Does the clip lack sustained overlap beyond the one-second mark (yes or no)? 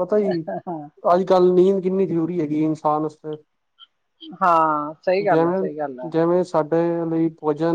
yes